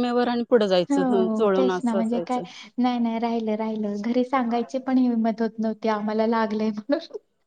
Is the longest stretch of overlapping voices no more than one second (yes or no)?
no